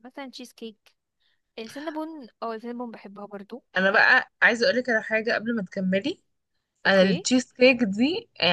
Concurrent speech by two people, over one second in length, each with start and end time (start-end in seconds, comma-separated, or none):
none